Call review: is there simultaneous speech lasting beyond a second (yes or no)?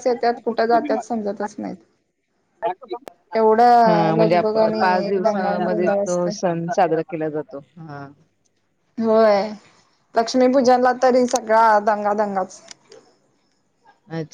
yes